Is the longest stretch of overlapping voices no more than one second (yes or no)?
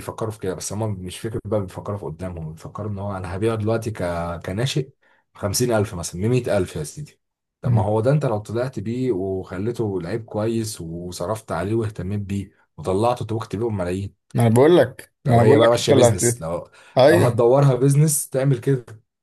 no